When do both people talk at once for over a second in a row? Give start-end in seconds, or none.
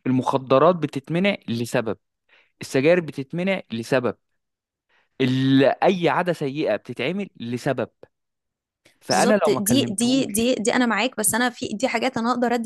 9.1-10.5